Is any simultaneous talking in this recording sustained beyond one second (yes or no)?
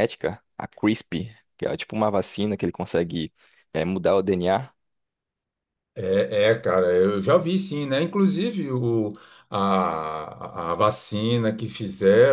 no